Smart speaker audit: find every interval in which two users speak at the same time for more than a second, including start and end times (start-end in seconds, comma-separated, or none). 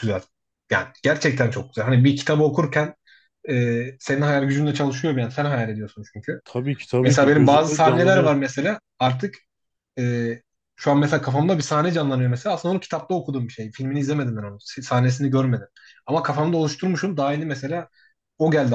7.0-8.4